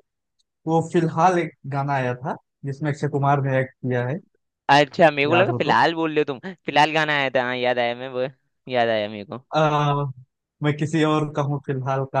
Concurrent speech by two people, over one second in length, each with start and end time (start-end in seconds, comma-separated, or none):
none